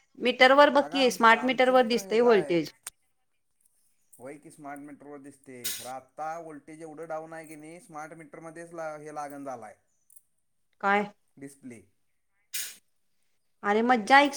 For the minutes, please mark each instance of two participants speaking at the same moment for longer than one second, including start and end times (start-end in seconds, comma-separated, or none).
0.8-2.5